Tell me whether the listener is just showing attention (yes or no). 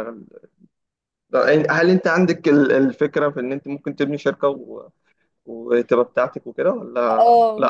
no